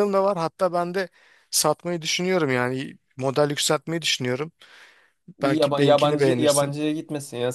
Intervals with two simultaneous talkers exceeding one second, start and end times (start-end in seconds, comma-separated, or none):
5.4-6.8